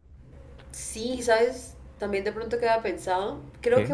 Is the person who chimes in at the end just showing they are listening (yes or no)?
yes